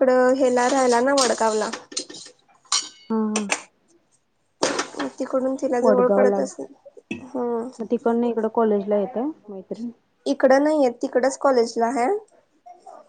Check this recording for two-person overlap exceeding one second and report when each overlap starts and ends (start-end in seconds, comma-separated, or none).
5.8-7.7